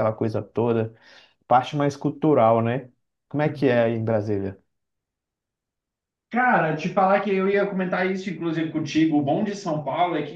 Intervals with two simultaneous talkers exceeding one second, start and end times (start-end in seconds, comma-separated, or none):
none